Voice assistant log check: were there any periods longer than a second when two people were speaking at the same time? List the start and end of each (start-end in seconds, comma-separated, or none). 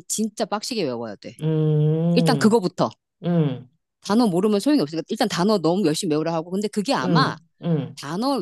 none